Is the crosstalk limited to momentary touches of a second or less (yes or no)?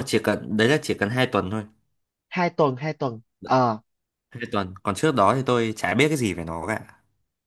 yes